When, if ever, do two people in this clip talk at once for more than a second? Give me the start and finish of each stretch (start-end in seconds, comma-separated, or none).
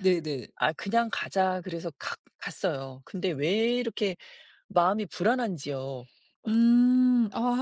none